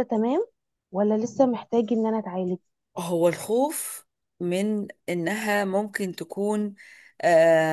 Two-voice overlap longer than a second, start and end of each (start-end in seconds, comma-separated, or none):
none